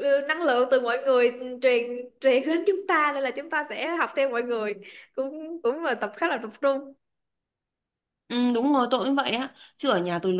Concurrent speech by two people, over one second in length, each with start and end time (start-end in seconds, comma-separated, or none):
none